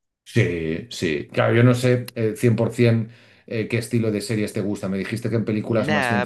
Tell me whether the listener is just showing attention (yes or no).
no